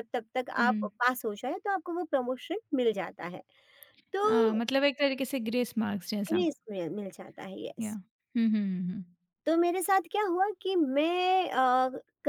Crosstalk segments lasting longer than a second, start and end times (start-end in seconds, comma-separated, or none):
none